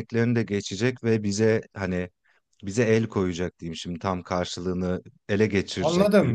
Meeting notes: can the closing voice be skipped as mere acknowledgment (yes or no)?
no